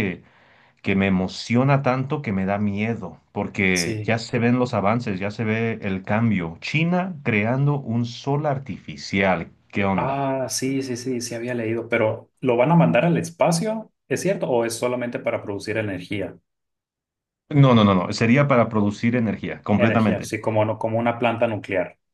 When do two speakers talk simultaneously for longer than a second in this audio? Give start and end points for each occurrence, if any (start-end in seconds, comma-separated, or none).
none